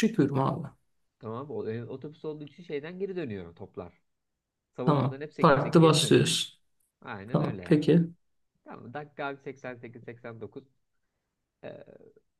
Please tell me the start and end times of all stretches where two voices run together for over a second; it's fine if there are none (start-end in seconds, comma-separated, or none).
4.8-6.3